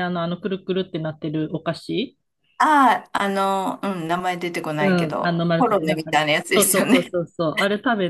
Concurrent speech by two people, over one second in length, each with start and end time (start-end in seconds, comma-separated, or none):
4.8-7.1